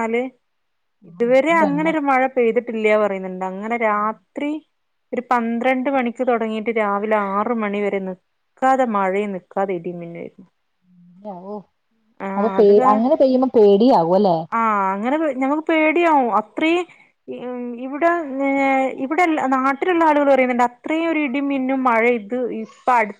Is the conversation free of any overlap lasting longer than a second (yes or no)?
yes